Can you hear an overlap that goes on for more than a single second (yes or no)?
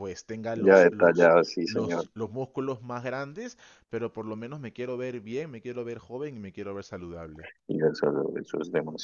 yes